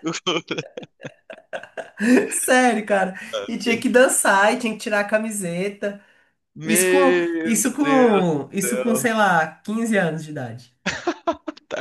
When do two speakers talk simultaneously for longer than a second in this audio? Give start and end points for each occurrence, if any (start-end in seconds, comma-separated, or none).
6.7-9.1